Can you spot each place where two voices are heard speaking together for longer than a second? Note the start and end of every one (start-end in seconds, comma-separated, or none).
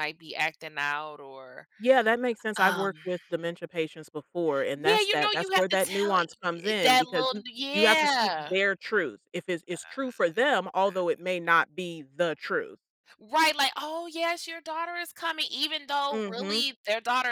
4.7-8.5